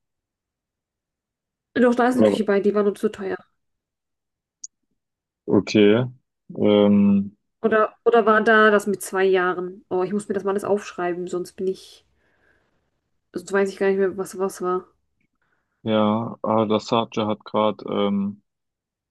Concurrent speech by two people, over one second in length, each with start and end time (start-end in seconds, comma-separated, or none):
none